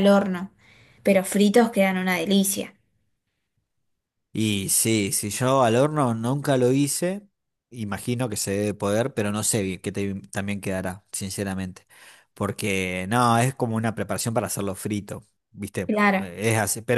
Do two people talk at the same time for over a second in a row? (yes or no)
no